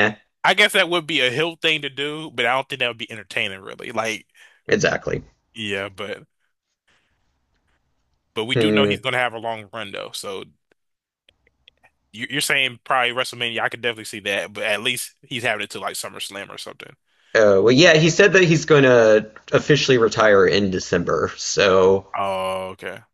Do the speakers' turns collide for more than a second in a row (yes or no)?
no